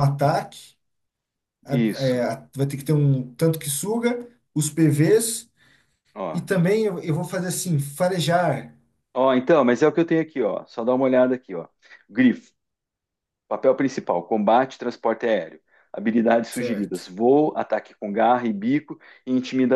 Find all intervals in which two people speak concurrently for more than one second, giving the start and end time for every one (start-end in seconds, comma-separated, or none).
none